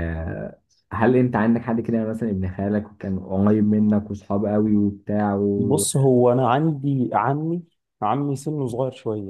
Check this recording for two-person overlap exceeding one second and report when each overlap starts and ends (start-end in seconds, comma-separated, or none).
none